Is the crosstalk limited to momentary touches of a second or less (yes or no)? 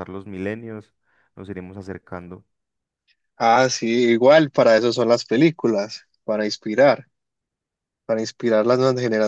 yes